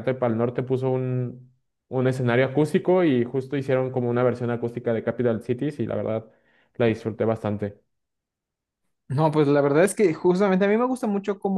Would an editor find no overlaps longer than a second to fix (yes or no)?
yes